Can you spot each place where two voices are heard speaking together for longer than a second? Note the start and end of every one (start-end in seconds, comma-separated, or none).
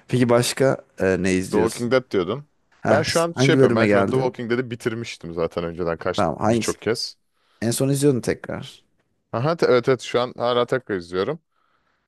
2.9-4.4